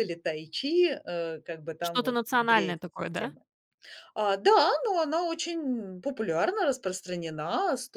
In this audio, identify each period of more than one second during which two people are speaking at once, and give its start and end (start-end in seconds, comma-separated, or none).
1.8-3.3